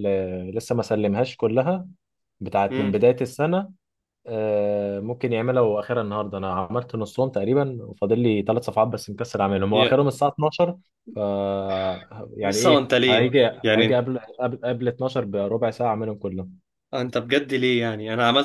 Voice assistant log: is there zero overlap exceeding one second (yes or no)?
no